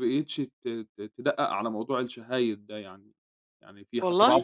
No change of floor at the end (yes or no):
yes